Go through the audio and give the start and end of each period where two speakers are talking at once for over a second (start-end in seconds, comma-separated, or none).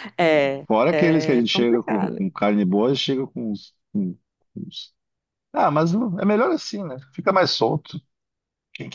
0.7-2.2